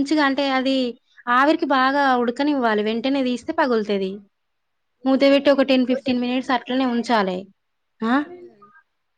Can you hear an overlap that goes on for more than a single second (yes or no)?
yes